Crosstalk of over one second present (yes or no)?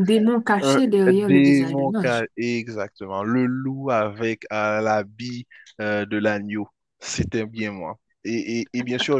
yes